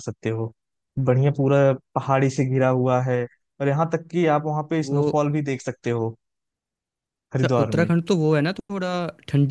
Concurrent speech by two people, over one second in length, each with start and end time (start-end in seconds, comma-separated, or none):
none